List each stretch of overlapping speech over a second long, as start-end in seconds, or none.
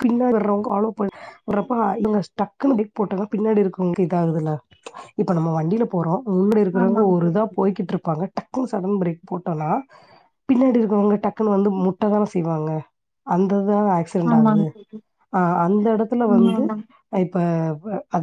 none